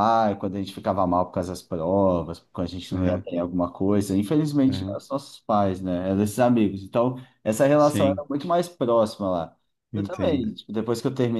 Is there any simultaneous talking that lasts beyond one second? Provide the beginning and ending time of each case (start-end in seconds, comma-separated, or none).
none